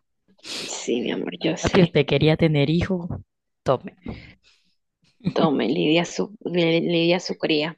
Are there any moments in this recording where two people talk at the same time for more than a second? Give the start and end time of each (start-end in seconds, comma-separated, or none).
none